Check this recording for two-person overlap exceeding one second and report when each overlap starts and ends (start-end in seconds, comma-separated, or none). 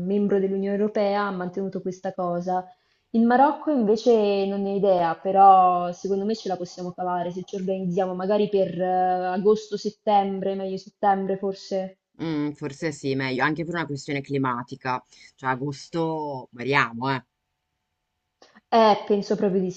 none